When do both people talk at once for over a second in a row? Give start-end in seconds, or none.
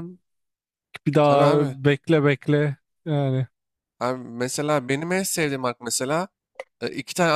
none